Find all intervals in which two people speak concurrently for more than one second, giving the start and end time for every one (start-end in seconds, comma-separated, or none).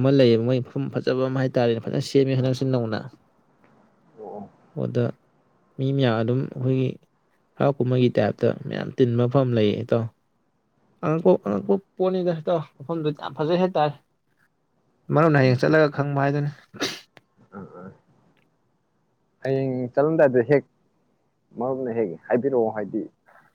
none